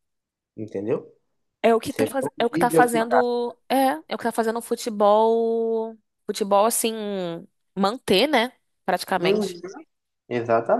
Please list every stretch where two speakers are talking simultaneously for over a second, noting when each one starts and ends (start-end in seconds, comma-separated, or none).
1.9-3.2